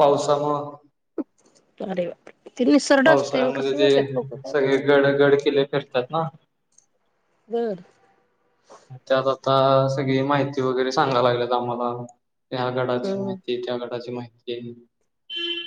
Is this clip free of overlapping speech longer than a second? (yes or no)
no